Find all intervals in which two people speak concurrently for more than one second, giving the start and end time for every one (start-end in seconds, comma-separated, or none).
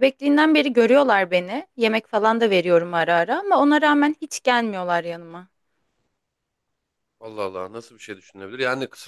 none